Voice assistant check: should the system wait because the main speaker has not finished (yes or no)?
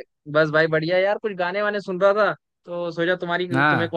yes